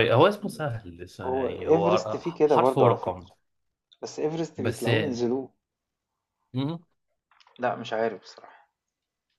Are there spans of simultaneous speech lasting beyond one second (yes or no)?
yes